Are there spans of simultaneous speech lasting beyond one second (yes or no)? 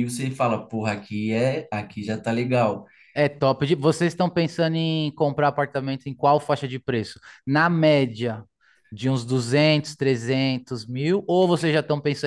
no